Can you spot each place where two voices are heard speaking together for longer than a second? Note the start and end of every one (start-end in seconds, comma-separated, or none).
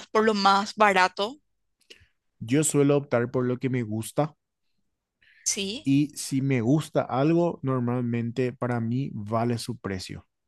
none